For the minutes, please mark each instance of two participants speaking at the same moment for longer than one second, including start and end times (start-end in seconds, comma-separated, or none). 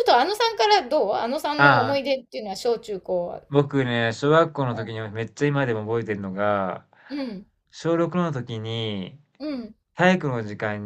none